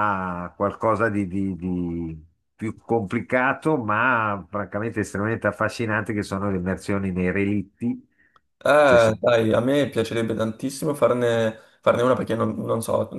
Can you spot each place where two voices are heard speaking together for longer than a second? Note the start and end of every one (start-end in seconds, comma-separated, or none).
none